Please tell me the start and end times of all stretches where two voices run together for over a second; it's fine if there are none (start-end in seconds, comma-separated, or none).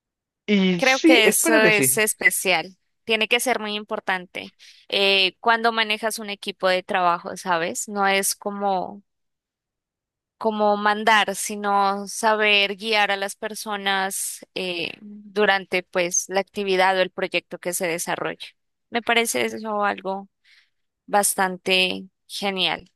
0.8-2.0